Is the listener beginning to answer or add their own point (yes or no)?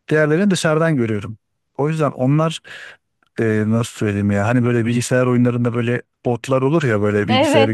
yes